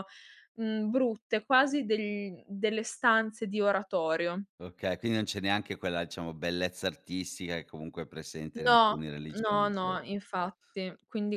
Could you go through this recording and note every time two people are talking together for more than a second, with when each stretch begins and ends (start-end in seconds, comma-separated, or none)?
8.7-10.0